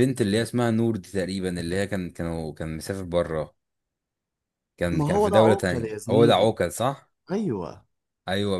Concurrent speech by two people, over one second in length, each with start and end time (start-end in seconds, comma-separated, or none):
4.9-6.5